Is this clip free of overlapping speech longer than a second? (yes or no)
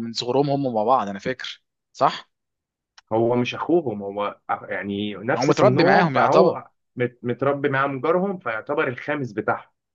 no